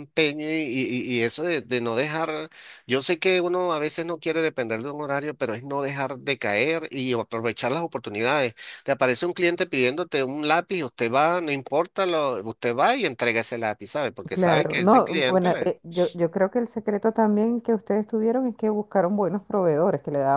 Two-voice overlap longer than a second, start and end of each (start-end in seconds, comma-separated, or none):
14.3-15.7